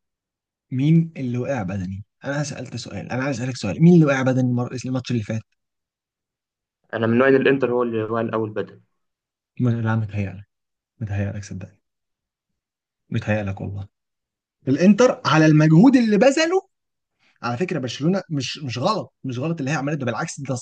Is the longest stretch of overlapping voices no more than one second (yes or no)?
yes